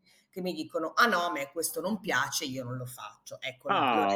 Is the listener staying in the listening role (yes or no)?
no